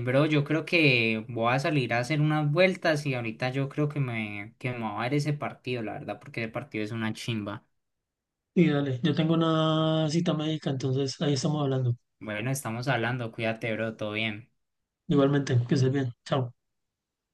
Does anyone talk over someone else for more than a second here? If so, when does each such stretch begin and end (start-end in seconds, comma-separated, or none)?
none